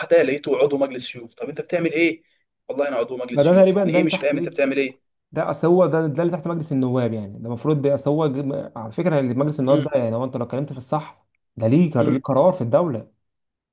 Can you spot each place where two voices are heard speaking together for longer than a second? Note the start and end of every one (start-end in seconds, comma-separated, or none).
3.3-4.6